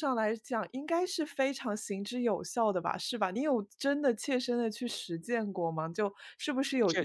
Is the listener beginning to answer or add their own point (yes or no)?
no